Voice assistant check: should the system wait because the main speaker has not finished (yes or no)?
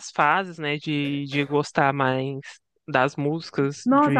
no